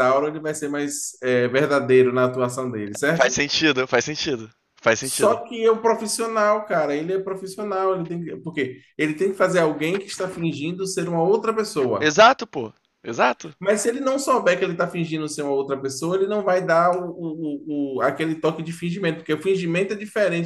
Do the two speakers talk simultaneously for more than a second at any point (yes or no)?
no